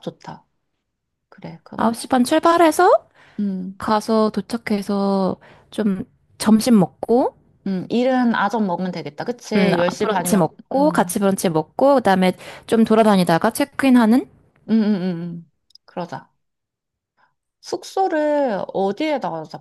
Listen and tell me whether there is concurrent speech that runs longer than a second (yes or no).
yes